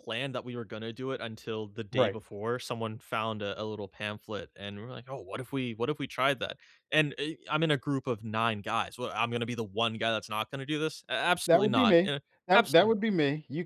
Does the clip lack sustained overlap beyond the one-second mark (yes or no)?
no